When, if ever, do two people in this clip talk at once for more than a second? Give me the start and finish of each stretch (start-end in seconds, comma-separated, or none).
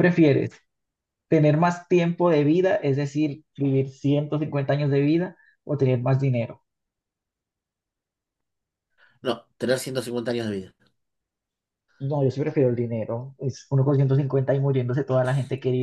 none